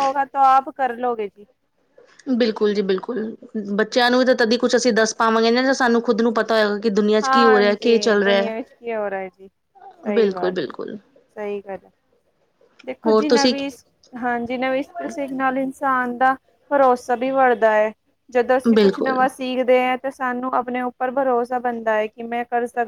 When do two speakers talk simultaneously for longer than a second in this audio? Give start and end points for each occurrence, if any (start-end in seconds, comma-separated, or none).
none